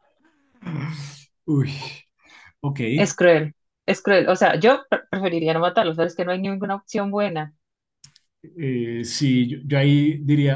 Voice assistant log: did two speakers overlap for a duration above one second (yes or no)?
no